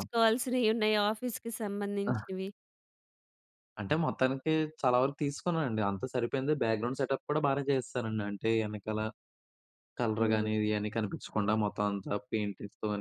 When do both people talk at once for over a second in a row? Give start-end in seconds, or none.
none